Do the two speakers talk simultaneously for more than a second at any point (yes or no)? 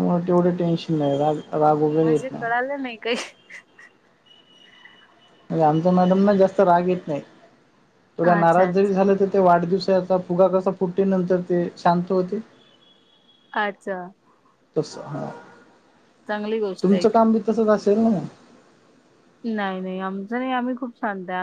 no